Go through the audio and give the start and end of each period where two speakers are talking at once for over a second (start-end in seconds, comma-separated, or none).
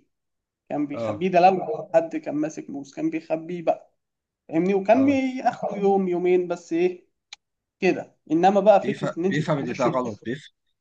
8.8-10.2